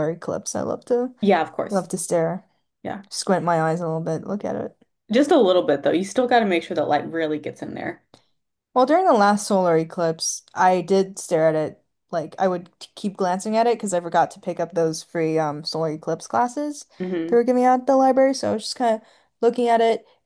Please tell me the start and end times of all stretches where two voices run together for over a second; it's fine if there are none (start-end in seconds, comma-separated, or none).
none